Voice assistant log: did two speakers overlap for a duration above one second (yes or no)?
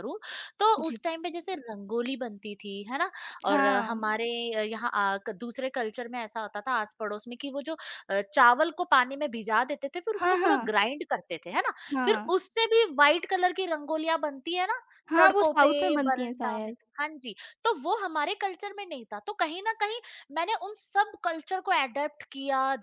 yes